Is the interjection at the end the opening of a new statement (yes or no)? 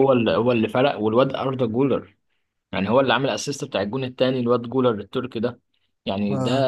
no